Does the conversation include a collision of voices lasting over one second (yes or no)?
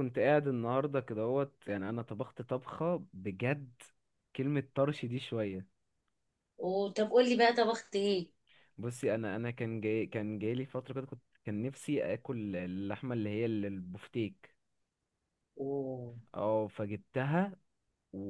no